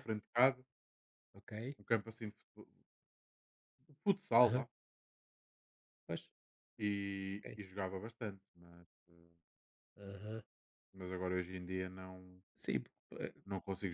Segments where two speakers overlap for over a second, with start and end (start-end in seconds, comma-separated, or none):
none